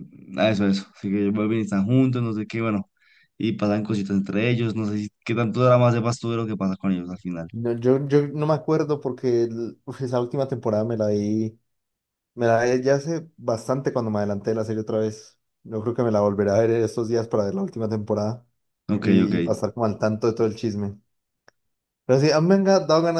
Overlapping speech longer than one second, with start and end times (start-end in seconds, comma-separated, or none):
none